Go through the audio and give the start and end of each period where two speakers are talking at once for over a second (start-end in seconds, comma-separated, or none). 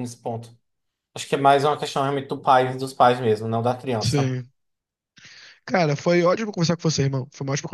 none